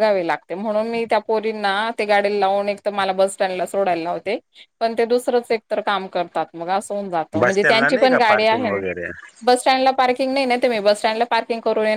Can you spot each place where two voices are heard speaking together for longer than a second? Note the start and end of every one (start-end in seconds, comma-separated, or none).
7.4-8.7